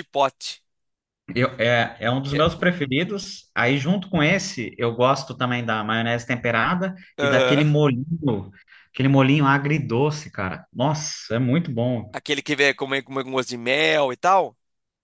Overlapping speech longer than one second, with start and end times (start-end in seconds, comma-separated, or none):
none